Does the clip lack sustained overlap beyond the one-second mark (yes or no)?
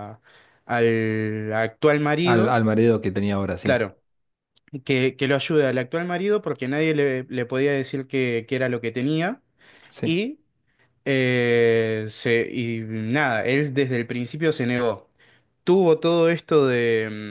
yes